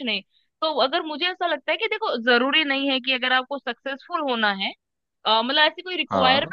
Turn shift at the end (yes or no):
no